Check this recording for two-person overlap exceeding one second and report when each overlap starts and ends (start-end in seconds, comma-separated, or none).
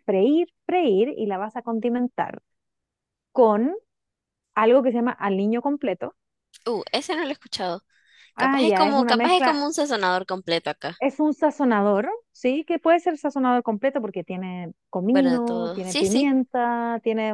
8.4-9.6, 15.1-16.3